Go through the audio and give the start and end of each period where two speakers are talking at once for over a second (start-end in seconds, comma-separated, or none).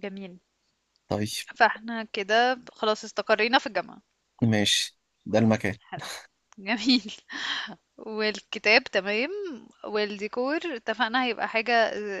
none